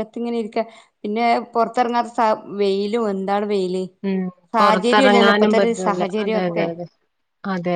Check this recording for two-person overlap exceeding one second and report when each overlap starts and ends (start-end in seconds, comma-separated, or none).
4.6-6.7